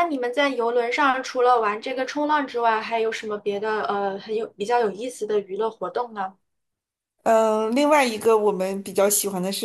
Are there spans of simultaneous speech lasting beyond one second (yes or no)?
no